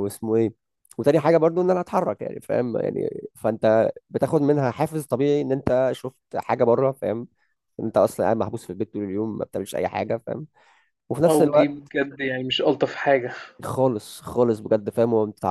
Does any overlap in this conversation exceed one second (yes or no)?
no